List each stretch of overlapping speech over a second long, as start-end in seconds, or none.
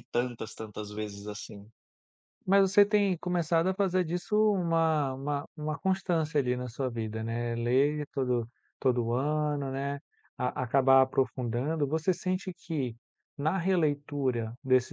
none